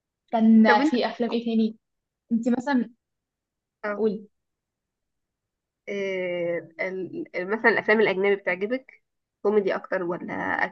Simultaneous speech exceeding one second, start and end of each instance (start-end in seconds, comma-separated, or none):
none